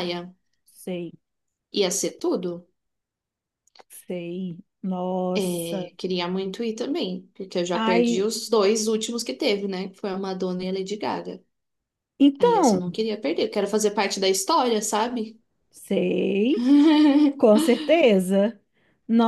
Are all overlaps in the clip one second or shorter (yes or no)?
yes